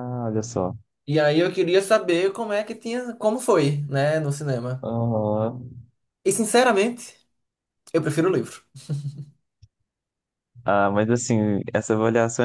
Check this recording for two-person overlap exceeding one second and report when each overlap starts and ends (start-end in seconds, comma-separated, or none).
none